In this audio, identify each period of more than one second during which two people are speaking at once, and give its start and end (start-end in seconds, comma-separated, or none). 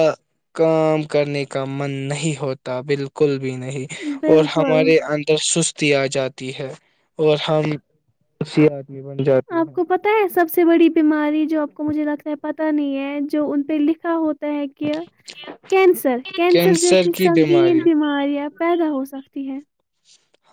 16.5-17.8